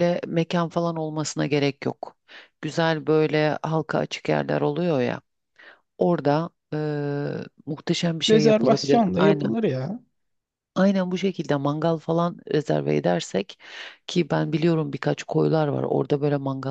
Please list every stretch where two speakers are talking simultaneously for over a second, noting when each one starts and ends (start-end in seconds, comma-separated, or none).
8.3-9.6